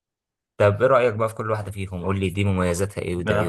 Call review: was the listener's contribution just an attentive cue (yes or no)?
no